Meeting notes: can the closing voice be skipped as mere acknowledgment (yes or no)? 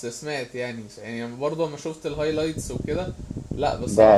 no